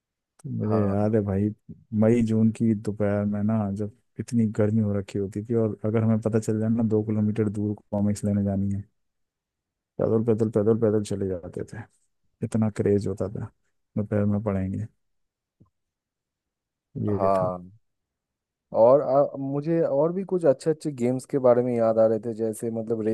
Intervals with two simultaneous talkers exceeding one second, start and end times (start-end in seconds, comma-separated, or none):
none